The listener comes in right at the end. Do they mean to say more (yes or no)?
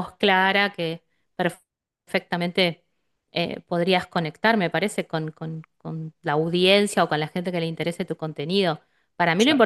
no